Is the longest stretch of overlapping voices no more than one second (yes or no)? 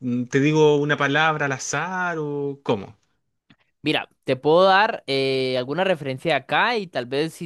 yes